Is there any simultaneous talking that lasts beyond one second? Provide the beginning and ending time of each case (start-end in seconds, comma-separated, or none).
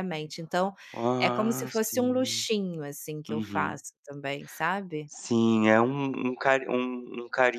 1.2-2.4